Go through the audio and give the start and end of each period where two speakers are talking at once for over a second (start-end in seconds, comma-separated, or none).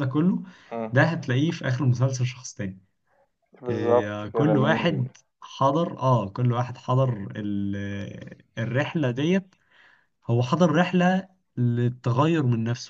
3.7-5.0